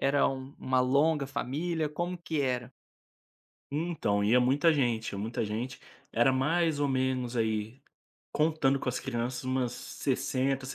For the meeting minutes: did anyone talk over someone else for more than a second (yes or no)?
no